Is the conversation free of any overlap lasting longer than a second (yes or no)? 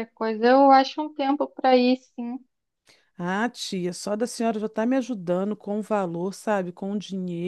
yes